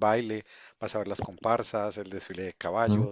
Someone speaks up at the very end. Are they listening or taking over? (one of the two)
listening